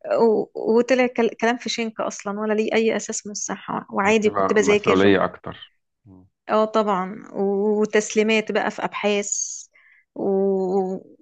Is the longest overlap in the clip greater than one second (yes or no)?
yes